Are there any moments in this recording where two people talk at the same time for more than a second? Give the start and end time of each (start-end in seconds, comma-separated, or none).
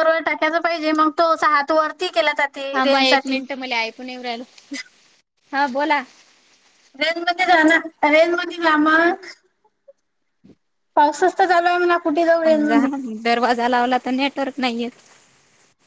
none